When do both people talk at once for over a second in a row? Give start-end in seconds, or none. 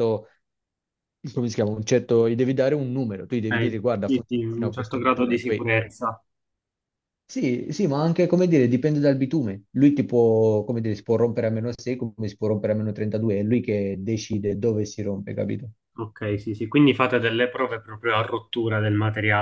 3.3-5.7